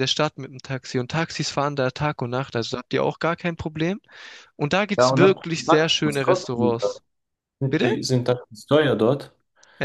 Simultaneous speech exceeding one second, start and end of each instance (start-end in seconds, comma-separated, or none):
5.0-6.8